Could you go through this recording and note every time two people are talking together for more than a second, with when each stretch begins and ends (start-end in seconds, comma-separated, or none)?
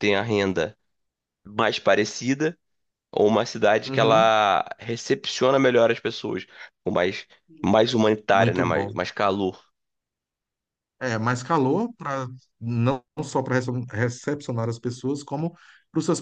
none